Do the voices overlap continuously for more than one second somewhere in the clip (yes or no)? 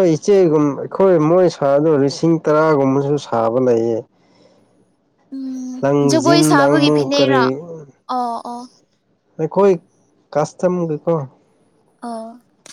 yes